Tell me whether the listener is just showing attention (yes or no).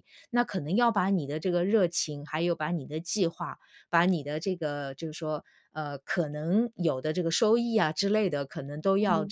yes